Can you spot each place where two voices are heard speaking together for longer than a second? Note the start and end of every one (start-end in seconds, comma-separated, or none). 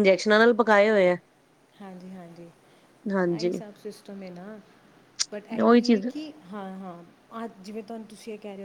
none